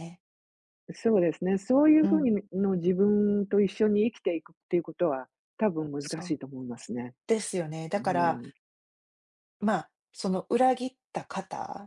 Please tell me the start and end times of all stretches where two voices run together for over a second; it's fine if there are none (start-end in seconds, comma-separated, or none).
none